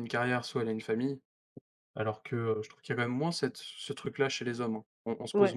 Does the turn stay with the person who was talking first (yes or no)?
no